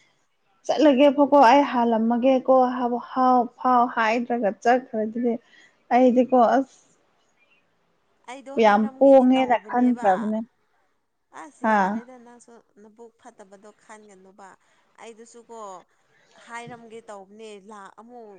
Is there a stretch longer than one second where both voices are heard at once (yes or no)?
yes